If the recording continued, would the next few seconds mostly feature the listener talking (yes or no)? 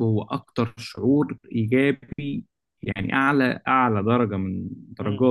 no